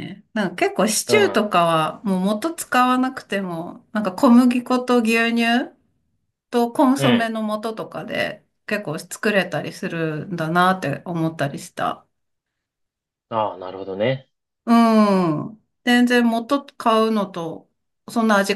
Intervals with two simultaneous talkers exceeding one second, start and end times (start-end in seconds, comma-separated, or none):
none